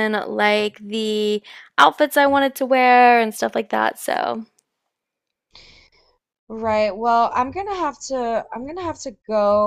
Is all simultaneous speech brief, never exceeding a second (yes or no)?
yes